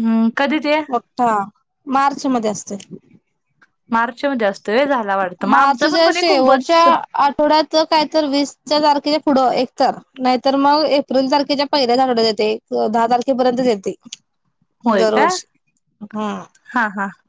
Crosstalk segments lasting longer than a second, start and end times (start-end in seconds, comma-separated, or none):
5.5-6.8